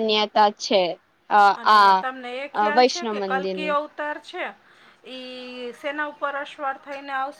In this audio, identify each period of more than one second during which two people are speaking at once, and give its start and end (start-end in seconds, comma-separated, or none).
1.6-3.8